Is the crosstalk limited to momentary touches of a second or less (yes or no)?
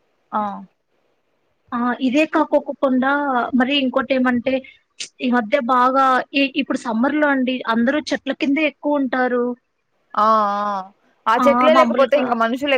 yes